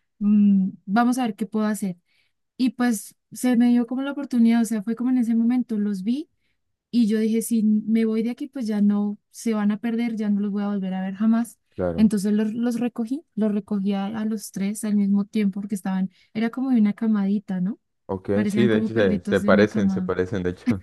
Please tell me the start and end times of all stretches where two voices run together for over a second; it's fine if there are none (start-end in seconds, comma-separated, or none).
18.3-20.1